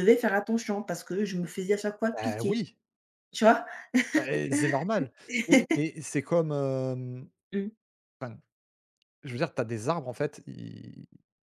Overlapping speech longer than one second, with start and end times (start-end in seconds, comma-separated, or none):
none